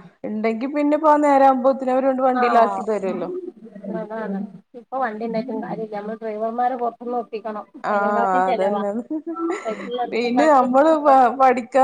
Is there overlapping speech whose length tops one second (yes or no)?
no